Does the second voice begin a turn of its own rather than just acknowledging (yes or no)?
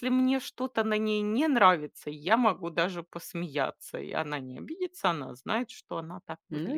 yes